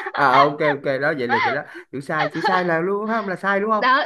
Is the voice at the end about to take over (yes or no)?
yes